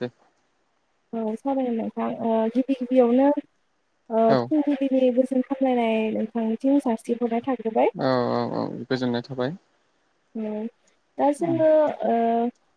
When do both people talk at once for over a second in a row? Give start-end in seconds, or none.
none